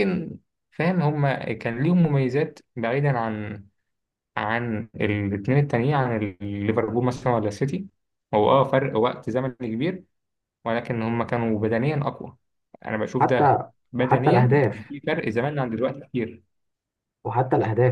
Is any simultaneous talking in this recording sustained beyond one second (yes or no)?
yes